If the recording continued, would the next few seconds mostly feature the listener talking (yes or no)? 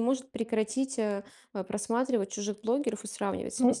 yes